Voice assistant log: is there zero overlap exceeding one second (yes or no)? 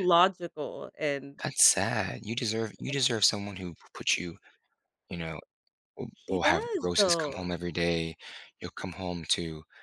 no